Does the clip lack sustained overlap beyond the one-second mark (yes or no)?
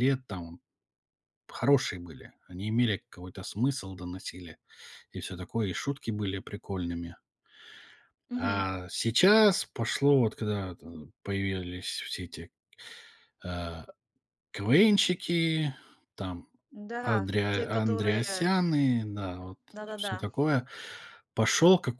no